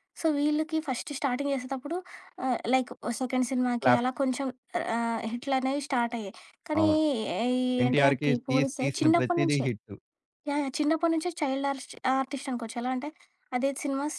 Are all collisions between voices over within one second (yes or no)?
no